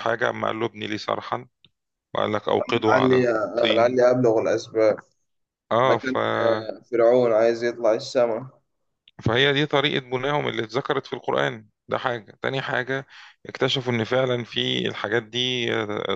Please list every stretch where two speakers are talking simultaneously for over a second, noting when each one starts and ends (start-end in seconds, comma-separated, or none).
2.7-4.0